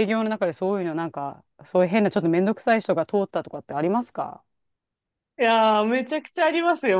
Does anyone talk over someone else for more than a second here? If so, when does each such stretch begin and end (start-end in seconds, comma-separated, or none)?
none